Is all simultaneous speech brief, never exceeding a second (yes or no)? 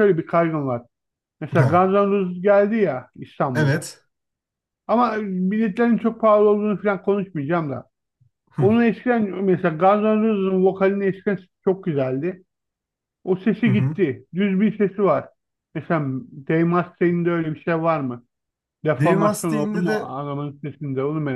no